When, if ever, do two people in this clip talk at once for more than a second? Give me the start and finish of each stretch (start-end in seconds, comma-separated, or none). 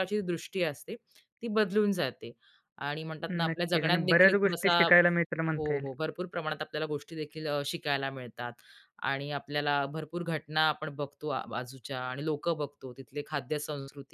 3.5-4.9